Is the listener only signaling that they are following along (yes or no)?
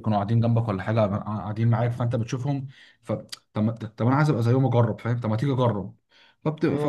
yes